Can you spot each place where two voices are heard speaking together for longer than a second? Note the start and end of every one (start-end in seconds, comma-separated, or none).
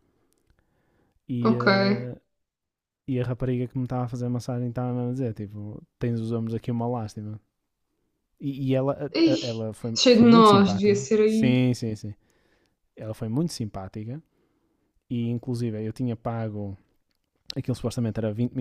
9.1-11.6